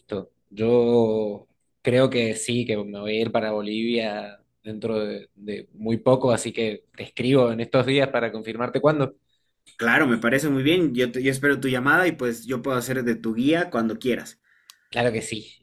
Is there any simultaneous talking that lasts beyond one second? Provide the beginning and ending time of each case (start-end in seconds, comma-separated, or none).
none